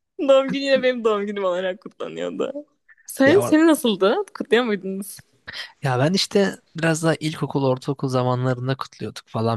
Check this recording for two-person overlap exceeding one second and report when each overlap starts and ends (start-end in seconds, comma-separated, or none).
none